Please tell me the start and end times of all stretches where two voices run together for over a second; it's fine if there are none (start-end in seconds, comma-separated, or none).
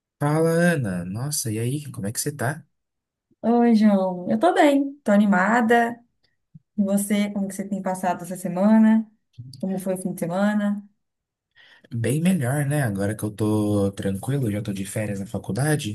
none